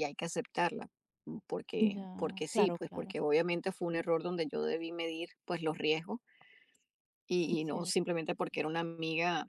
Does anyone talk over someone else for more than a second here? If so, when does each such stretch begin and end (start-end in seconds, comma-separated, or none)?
1.8-3.1